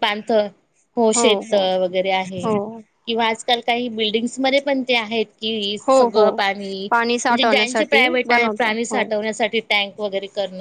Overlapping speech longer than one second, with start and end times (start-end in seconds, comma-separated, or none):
7.3-9.0